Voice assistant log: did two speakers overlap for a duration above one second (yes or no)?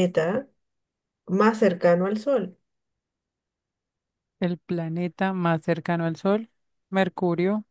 no